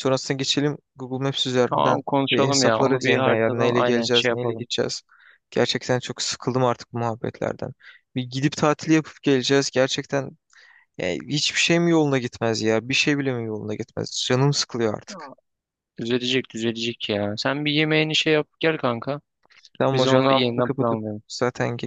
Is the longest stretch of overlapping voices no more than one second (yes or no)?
no